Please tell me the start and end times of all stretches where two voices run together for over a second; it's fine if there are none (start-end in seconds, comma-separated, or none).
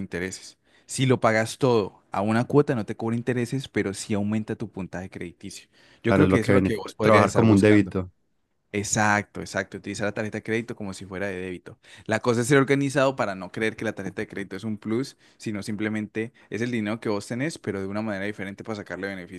6.1-7.9